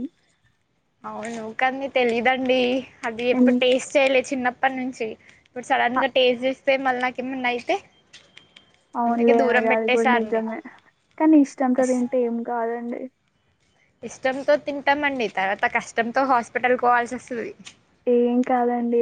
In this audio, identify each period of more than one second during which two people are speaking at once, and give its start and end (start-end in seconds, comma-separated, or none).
none